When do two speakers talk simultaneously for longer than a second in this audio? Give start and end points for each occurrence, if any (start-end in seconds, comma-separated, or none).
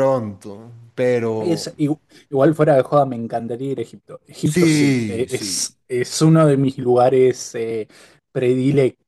4.4-5.8